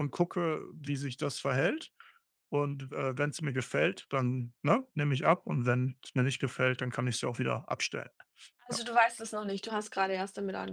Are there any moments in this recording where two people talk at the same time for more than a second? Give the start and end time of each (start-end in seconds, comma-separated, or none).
none